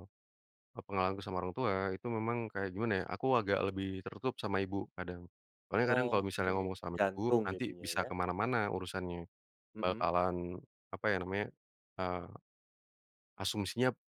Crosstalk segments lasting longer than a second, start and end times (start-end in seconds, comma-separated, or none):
5.8-8.1